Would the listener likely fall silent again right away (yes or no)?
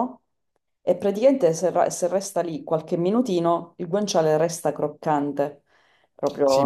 no